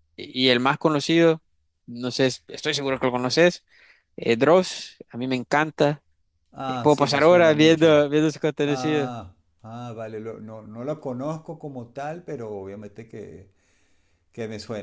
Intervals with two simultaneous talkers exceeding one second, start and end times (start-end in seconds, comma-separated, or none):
6.7-8.0